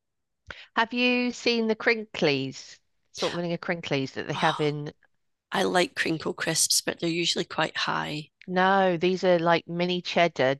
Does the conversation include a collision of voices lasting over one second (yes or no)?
no